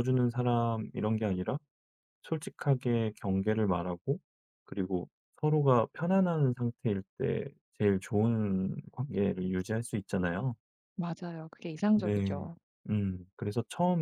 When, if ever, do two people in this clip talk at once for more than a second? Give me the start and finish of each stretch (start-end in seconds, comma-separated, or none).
none